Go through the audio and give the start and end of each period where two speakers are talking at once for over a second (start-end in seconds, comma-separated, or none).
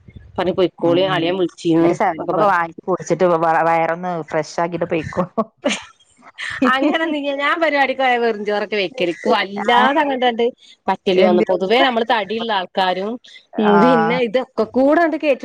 none